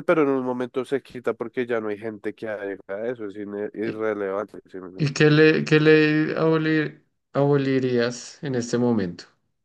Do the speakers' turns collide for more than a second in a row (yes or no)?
no